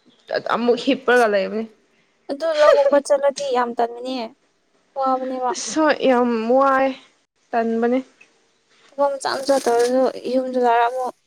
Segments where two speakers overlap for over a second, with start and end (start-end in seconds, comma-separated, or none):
none